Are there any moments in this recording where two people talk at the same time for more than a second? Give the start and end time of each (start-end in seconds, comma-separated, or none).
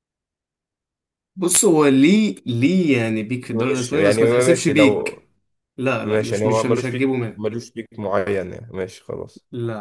3.5-5.2, 6.0-7.4